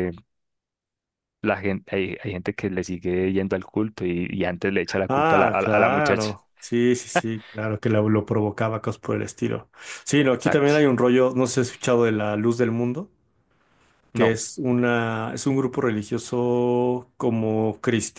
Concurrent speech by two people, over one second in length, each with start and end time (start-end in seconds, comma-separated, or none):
5.1-6.3